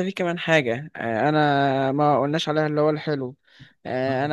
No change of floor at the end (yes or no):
yes